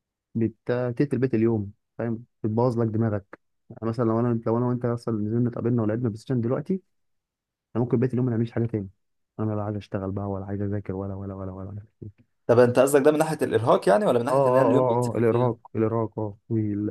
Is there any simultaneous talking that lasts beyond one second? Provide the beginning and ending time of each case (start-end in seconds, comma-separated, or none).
14.3-15.5